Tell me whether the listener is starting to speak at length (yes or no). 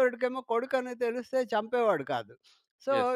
no